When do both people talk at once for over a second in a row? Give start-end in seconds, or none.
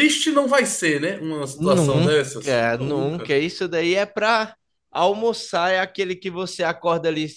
1.5-3.3